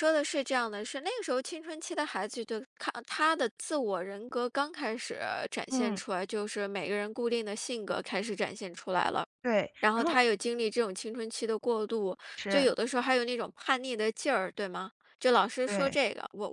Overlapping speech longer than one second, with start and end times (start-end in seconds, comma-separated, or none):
none